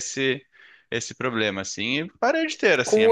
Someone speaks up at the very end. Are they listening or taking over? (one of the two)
taking over